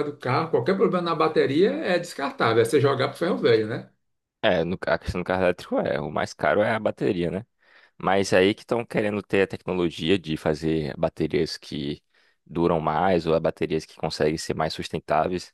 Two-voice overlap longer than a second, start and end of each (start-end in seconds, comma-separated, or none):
none